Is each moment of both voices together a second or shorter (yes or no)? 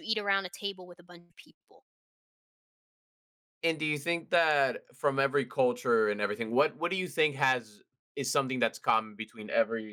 yes